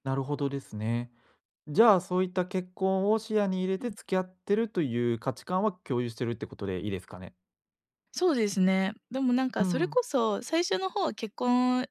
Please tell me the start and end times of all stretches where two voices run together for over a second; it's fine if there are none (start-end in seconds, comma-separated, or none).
none